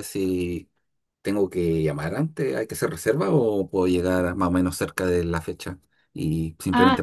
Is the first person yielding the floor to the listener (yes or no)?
yes